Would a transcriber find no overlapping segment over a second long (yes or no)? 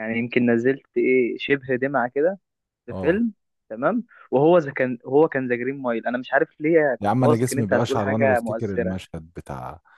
no